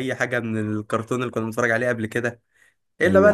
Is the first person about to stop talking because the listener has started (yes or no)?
no